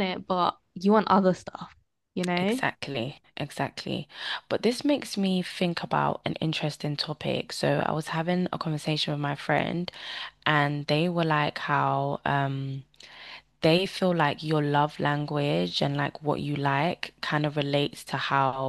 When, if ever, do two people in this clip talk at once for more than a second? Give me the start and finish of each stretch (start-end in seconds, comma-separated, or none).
none